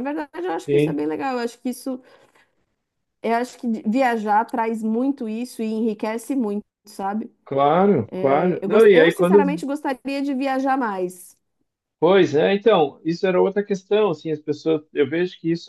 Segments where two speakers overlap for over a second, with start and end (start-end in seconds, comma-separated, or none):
8.2-9.4